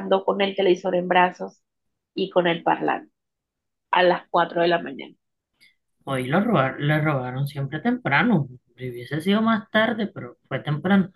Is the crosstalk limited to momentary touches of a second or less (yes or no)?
yes